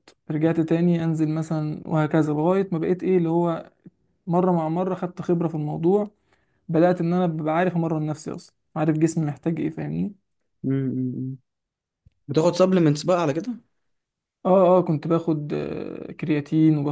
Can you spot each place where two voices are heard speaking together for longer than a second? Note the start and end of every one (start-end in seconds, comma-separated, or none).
none